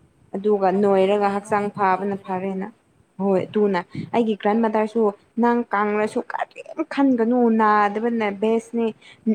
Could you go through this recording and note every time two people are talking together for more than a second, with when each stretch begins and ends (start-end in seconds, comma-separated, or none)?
0.7-2.7